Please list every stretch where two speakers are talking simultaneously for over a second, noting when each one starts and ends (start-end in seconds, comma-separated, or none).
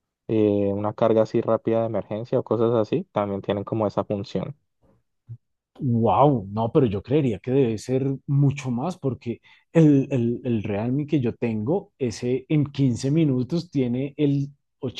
none